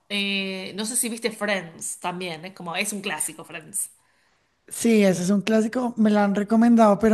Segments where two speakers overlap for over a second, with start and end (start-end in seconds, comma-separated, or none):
none